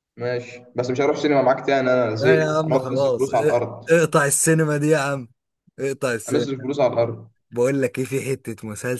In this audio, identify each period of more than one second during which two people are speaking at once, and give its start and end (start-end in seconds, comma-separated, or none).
2.2-3.9